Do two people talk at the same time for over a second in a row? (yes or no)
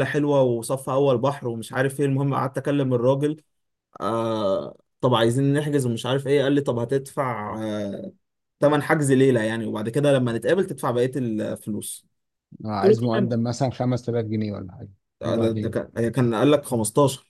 no